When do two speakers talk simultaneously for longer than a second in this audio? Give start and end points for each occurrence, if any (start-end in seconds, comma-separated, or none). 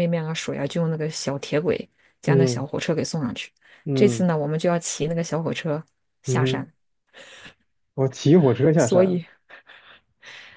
none